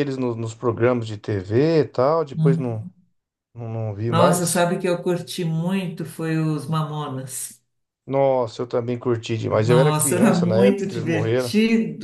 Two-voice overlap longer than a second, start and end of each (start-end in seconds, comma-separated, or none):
9.5-11.5